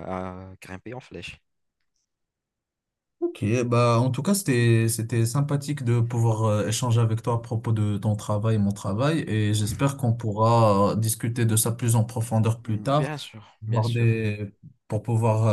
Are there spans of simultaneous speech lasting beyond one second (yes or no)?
yes